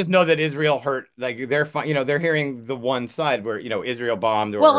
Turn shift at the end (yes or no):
yes